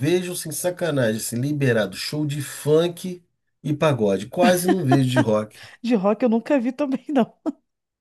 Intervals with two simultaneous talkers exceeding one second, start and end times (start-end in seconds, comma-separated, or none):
none